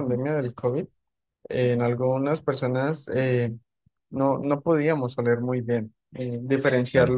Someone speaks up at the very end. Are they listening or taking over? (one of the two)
listening